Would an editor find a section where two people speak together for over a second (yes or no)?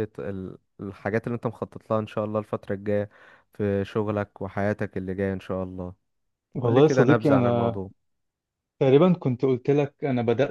yes